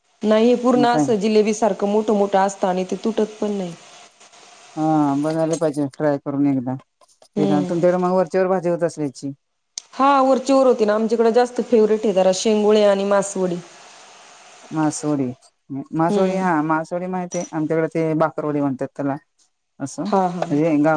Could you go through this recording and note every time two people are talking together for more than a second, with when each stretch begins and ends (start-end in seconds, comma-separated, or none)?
none